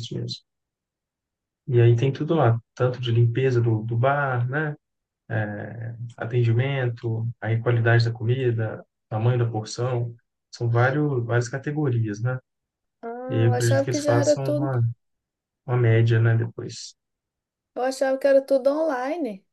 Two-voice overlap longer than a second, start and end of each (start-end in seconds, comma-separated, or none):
13.4-14.8